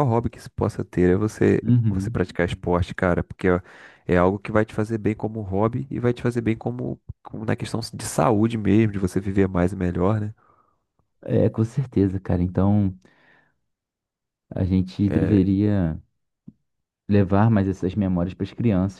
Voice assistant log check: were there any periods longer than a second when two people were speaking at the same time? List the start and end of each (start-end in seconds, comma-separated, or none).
none